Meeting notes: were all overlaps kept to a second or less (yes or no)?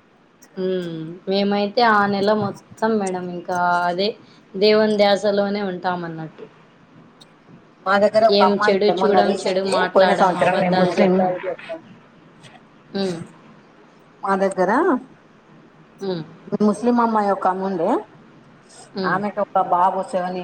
no